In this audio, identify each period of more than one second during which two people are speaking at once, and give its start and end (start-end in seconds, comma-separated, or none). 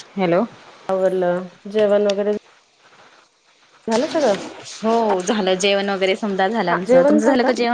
none